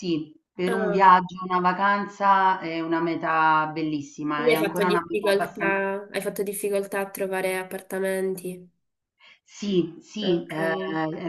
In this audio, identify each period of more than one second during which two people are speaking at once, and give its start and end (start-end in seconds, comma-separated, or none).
4.3-5.8